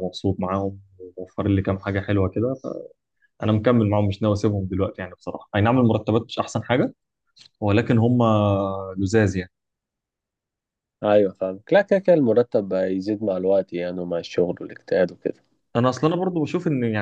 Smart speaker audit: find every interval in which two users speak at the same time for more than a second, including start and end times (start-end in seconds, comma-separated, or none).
none